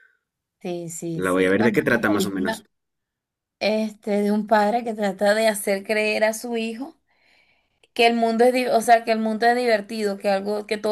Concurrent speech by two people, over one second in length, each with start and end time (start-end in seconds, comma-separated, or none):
1.1-2.6